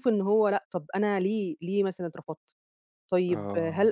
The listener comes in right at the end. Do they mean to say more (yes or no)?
no